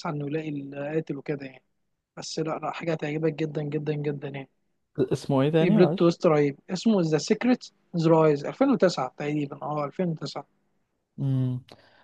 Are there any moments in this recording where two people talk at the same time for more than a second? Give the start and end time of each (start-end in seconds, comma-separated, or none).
none